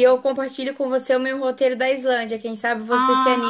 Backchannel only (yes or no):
no